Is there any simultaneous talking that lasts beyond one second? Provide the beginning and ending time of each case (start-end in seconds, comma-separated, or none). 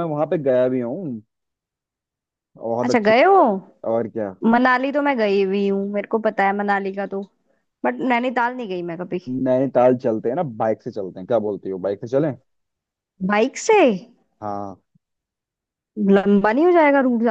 none